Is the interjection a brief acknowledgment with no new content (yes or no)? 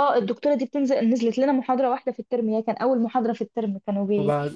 yes